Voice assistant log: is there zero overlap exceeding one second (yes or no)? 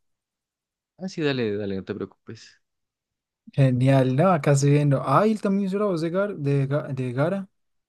yes